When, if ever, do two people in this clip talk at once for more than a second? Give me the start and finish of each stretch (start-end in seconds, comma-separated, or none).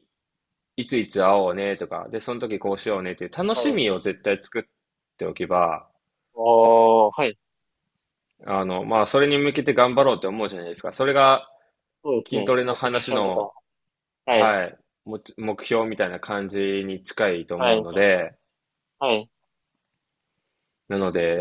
12.3-13.5